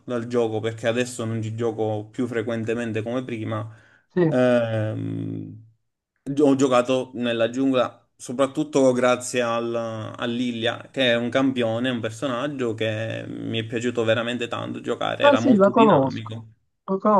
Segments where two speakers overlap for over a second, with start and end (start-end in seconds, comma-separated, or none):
15.2-16.4